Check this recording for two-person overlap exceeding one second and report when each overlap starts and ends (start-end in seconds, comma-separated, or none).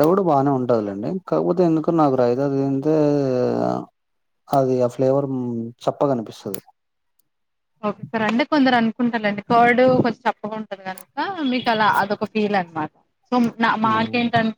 none